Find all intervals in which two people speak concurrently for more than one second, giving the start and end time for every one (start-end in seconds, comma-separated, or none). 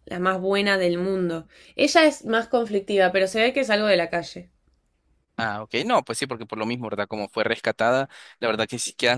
none